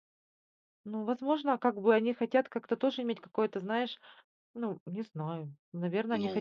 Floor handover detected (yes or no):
no